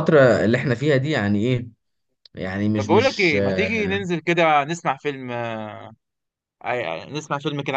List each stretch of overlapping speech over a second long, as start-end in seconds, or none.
2.7-4.0